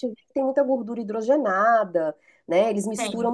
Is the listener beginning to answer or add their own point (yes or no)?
no